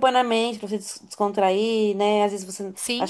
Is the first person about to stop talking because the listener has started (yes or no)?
no